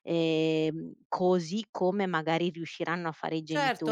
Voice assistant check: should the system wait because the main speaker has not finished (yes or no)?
no